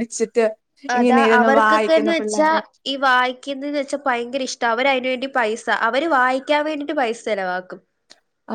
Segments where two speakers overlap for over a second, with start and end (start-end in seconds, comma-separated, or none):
1.0-2.5